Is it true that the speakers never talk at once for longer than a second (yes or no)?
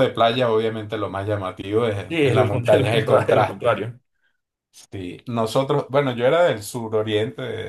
no